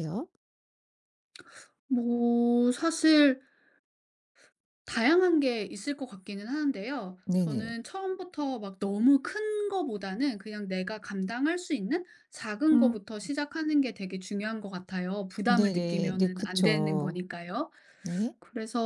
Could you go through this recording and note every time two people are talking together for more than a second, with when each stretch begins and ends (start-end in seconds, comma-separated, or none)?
15.4-17.2